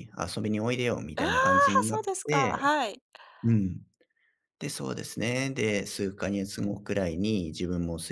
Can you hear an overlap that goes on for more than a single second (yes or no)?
yes